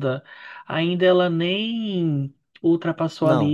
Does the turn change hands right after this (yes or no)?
no